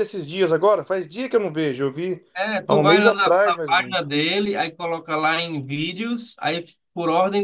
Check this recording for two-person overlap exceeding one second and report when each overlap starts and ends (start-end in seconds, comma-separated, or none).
2.7-4.1